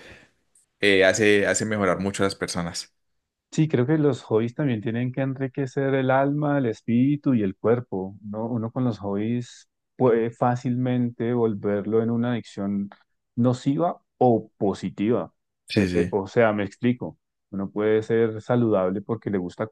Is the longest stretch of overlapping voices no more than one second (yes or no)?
yes